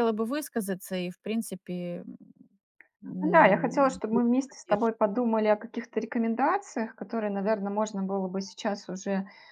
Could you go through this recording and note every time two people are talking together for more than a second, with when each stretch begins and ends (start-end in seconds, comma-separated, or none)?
3.2-4.9